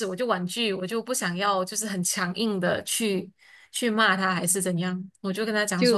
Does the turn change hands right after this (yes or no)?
yes